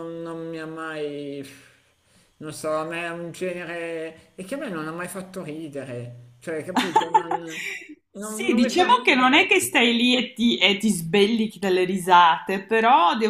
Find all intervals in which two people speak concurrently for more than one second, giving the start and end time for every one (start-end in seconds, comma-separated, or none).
8.2-9.5